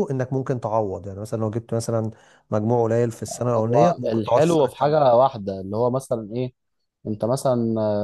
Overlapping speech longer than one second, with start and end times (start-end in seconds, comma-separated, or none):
3.6-5.0